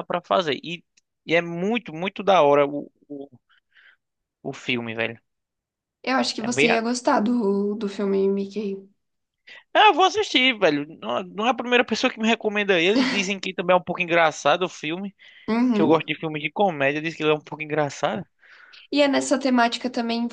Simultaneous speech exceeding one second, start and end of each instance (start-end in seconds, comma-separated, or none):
none